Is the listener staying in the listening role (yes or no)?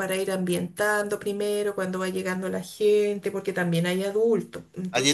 no